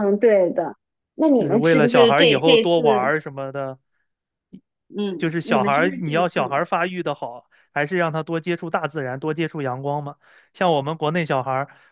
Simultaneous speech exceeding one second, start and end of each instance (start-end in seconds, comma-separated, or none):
1.4-2.8, 5.2-6.5